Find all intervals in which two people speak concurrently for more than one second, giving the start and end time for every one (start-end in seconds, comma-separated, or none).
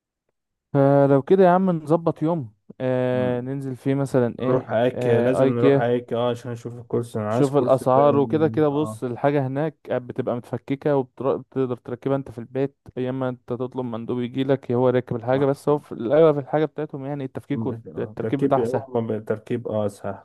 4.4-5.9, 7.3-9.0, 17.5-18.9